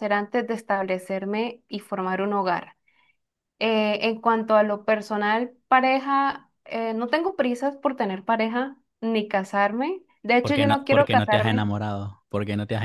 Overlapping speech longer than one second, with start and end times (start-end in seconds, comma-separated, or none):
10.4-11.7